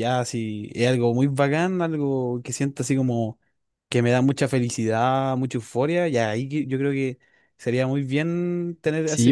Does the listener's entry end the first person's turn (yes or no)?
yes